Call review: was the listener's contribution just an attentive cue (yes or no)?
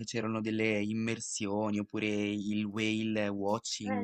no